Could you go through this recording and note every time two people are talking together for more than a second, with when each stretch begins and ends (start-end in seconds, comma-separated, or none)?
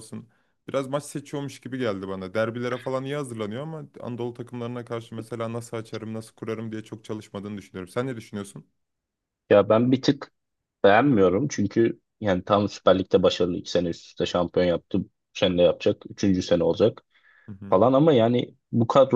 none